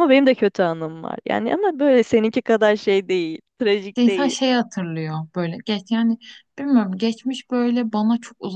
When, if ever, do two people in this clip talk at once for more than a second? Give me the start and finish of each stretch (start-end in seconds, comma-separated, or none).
none